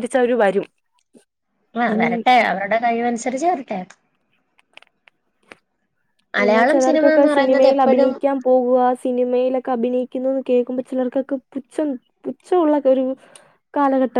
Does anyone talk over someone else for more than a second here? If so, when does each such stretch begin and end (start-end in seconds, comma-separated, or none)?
6.4-8.1